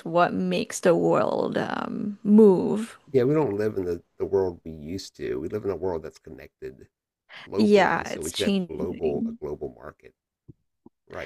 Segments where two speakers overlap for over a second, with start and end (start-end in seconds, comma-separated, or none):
7.6-9.4